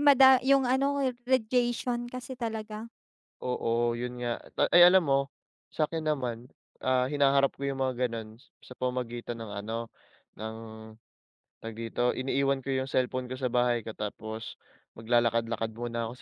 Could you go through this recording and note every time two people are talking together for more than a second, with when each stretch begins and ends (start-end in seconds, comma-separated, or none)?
none